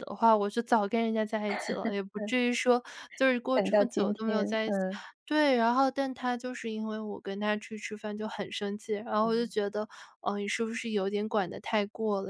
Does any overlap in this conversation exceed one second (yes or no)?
yes